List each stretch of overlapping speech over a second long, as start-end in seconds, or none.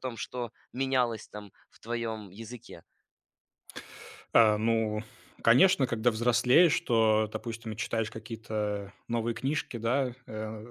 none